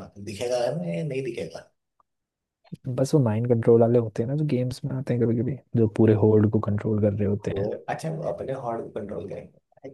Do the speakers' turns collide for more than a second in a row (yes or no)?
no